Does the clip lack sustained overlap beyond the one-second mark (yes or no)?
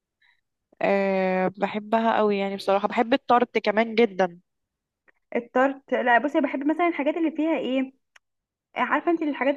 yes